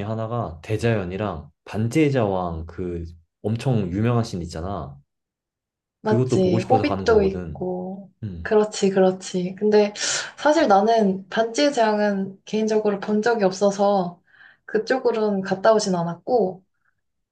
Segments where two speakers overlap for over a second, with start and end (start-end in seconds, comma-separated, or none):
6.0-7.6